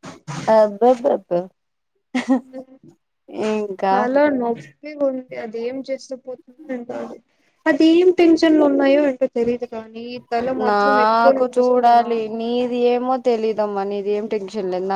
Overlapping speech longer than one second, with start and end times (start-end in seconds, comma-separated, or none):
10.7-12.4